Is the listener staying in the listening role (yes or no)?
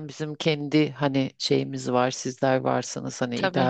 yes